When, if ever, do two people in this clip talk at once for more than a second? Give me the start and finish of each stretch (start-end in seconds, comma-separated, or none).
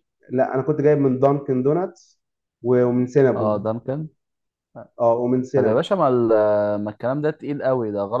none